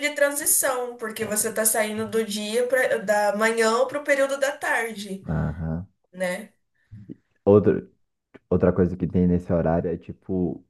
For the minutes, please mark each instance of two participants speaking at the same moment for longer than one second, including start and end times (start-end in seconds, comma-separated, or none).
none